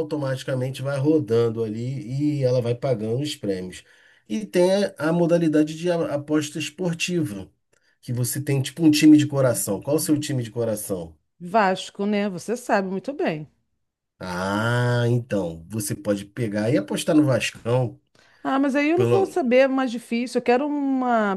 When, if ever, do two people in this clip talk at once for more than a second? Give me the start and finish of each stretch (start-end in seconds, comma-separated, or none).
none